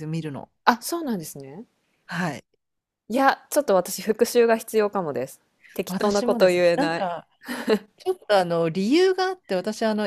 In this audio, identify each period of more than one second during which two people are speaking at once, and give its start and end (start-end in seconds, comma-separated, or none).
5.9-7.1